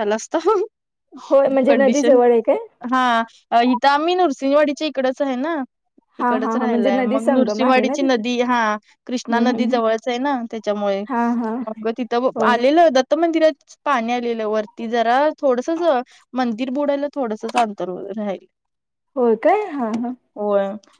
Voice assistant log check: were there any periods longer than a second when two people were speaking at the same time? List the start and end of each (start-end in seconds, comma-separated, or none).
6.2-8.2